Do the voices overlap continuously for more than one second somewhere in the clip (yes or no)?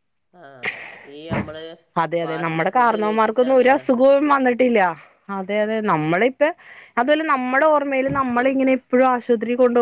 yes